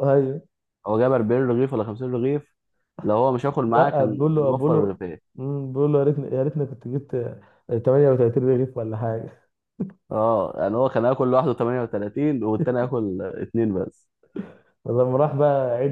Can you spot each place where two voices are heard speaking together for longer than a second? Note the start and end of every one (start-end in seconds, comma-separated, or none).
3.7-5.0